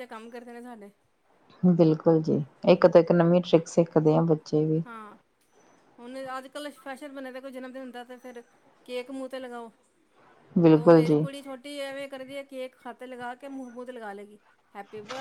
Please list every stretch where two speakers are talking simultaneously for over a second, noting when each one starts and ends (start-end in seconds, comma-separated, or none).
none